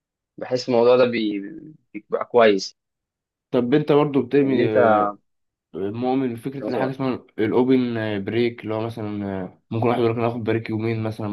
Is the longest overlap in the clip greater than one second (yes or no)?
no